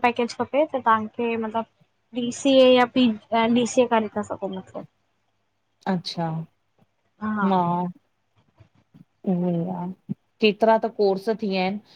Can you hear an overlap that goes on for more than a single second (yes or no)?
no